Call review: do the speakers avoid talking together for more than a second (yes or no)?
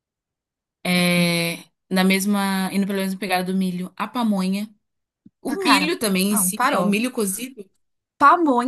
no